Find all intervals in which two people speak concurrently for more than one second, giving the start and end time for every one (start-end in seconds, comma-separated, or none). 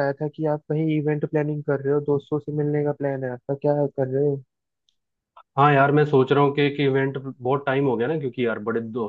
none